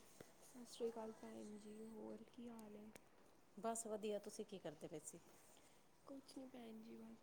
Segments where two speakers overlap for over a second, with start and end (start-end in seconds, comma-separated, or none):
none